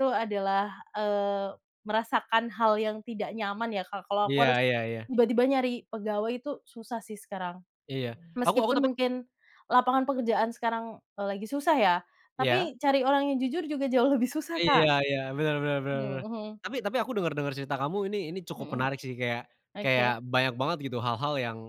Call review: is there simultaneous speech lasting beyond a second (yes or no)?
no